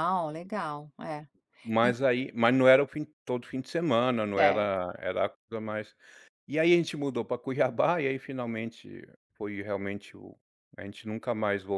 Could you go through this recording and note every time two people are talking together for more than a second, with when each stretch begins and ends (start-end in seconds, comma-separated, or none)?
none